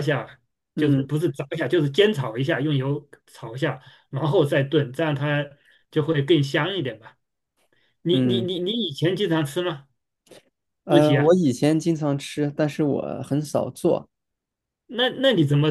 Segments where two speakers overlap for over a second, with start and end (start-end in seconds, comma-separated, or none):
none